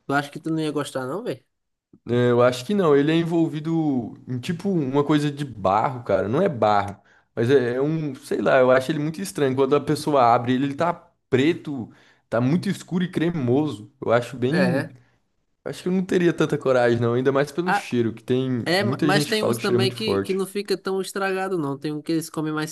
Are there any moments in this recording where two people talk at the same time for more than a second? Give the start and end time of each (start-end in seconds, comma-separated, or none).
18.6-20.4